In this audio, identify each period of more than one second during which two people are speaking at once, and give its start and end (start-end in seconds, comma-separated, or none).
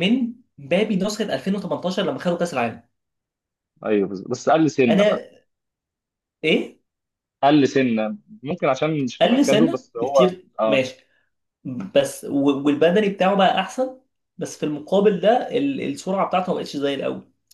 9.2-10.8